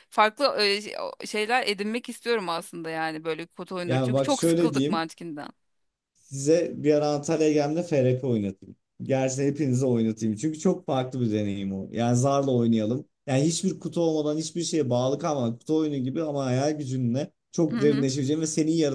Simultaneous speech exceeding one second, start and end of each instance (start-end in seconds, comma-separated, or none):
3.8-5.0